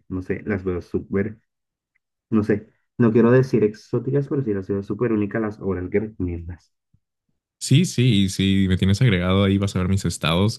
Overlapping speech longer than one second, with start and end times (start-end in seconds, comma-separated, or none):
none